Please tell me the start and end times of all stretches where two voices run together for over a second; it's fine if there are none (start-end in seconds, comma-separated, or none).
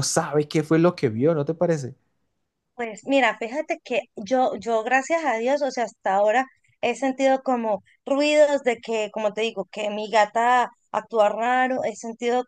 none